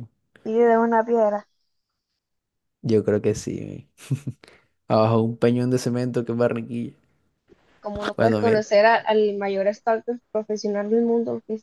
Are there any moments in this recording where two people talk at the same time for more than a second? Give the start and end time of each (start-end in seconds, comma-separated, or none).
none